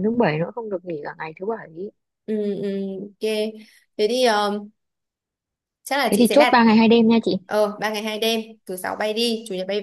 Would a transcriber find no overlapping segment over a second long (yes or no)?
yes